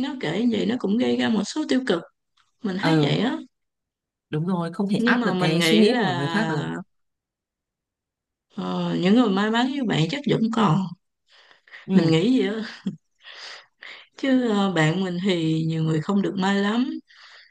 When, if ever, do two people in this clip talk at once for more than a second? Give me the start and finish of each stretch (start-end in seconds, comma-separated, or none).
5.0-6.3